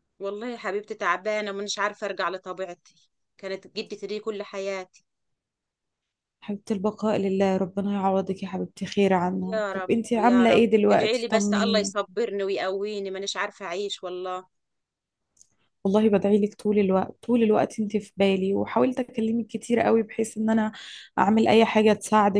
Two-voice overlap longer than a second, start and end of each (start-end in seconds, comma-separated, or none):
9.5-11.9